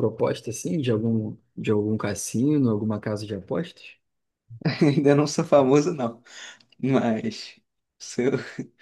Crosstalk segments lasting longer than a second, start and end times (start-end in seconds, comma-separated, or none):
none